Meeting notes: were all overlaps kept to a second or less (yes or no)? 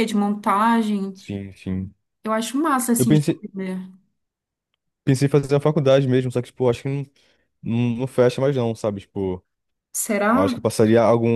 yes